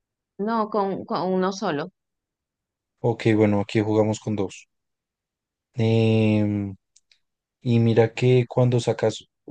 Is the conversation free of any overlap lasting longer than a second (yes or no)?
yes